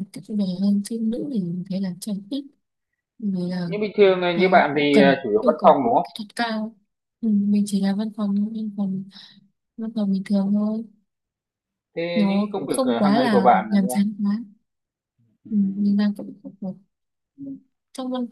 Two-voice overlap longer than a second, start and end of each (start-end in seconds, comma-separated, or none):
4.3-6.1, 12.1-14.0